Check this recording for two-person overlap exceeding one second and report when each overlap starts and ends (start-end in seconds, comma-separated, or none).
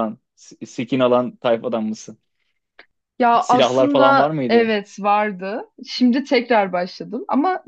3.4-4.7